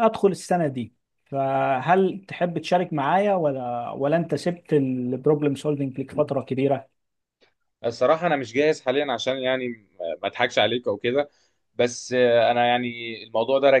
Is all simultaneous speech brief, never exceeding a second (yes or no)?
yes